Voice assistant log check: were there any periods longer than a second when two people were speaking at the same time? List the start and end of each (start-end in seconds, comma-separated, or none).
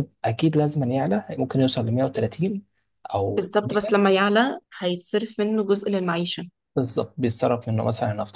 none